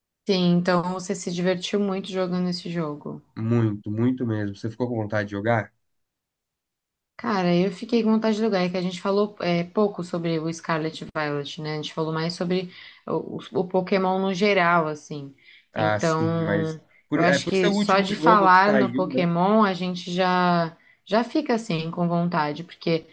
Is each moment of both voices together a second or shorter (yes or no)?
no